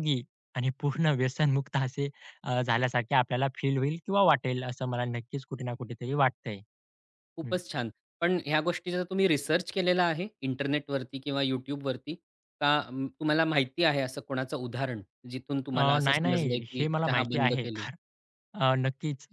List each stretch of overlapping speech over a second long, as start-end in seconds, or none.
15.7-17.9